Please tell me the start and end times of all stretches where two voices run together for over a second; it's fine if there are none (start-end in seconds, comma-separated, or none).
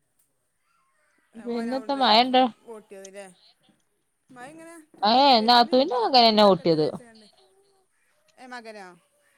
5.1-6.9